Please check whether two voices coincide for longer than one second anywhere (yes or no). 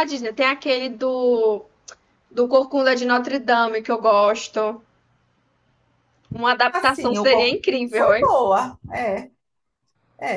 yes